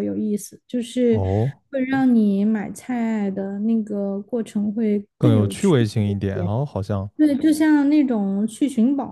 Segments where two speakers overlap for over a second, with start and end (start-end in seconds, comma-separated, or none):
5.2-6.5